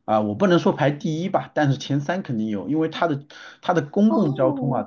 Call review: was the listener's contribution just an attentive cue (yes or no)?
yes